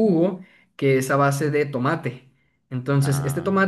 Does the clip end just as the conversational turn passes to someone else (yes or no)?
no